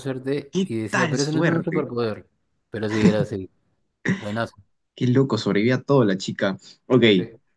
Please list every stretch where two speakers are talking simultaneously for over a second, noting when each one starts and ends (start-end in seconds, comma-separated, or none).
0.5-1.9